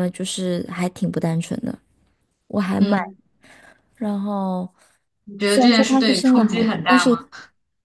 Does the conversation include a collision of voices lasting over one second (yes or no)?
yes